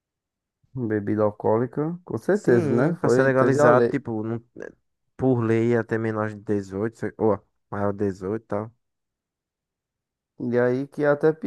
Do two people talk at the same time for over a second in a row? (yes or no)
yes